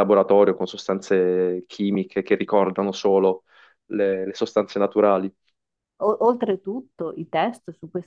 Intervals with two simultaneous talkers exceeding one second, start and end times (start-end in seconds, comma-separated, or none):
none